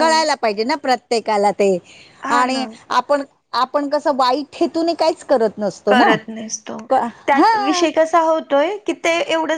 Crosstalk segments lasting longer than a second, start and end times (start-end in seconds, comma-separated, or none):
none